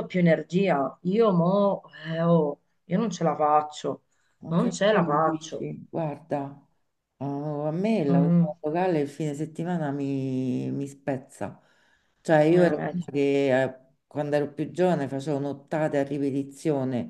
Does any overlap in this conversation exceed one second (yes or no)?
yes